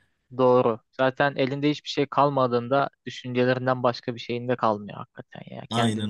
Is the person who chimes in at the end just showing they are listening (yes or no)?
yes